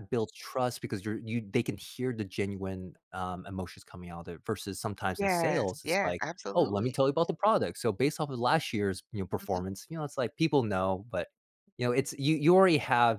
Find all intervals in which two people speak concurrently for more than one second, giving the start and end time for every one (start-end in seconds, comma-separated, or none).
5.2-7.0